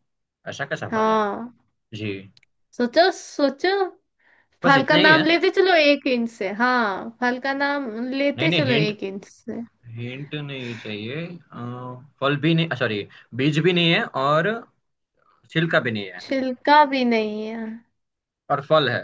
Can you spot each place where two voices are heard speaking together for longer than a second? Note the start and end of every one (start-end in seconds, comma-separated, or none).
none